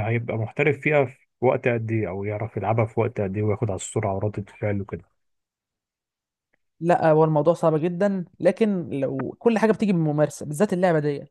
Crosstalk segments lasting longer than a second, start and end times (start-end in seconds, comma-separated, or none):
none